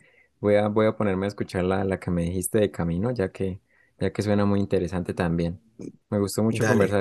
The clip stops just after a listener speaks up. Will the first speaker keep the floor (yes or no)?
yes